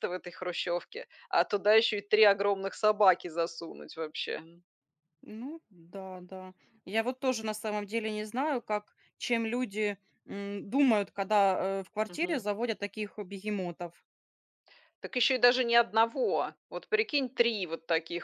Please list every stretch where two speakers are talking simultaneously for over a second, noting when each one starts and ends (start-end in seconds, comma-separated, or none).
none